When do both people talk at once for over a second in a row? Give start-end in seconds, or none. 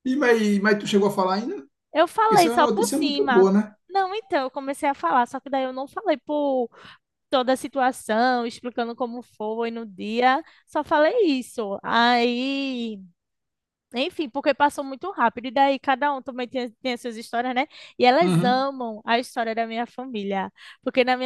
2.1-3.5